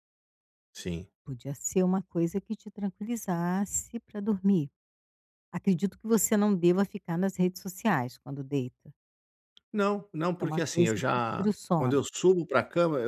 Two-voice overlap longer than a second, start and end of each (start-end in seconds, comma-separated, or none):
10.2-12.0